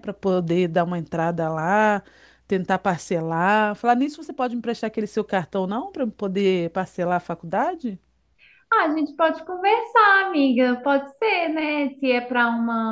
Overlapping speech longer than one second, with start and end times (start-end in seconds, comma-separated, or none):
none